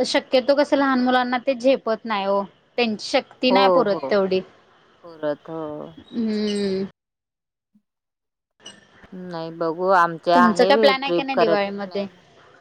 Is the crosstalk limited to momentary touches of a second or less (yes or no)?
no